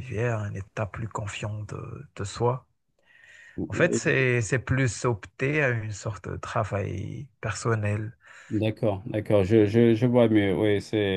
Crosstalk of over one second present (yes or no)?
no